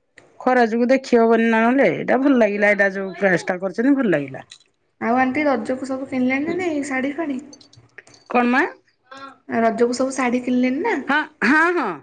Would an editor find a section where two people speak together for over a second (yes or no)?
no